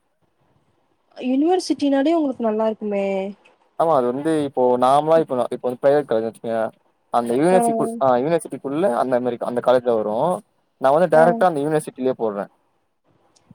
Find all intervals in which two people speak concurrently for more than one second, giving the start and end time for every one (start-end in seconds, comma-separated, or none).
none